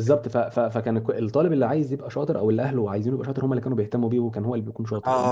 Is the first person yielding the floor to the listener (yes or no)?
yes